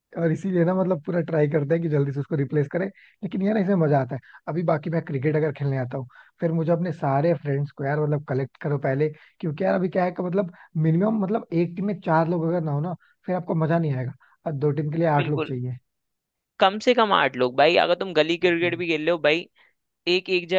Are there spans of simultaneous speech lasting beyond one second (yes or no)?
no